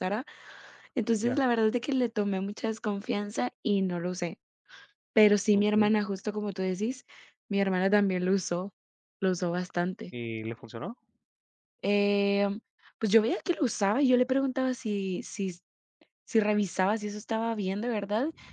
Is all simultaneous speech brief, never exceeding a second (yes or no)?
yes